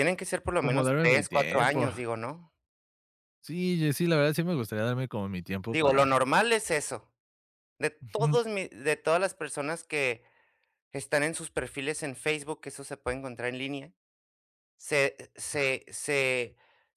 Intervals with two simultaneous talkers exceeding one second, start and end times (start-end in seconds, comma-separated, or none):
0.6-1.9